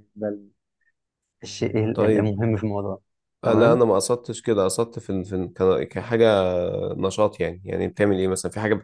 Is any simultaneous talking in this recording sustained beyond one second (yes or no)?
no